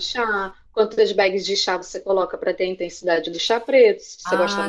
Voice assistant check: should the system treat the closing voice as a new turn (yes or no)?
no